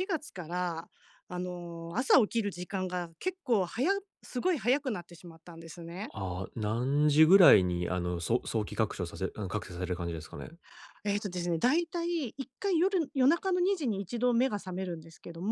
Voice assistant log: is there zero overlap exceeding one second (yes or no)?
yes